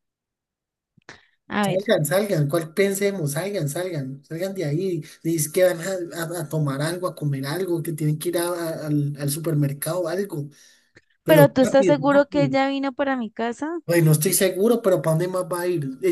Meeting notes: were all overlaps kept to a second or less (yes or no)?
no